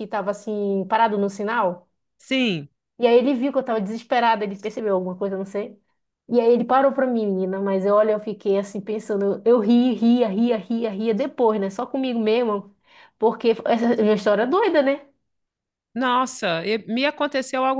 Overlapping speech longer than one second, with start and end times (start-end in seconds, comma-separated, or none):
none